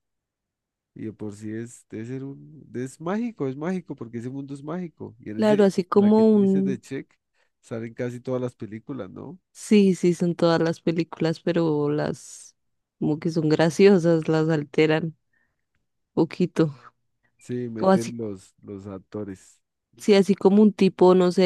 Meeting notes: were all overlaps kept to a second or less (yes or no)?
no